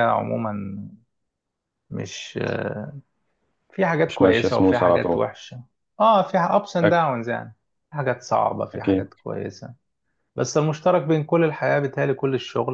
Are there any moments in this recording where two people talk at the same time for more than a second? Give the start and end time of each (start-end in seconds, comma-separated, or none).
4.0-5.3